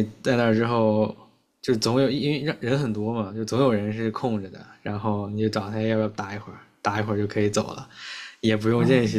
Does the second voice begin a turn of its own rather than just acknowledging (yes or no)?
no